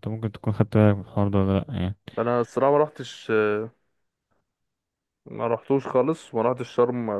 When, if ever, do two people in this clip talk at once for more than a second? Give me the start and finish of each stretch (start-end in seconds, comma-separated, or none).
none